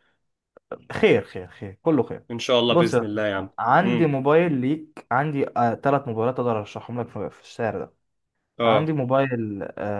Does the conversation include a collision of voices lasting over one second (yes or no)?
yes